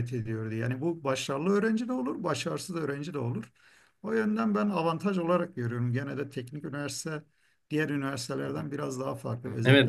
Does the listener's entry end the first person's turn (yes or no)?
yes